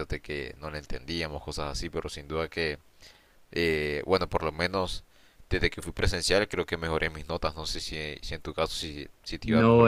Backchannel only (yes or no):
no